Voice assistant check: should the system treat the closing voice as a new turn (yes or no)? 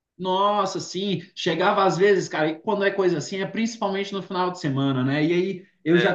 no